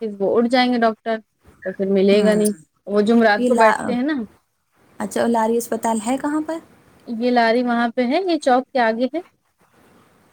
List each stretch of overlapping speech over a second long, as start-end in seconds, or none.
none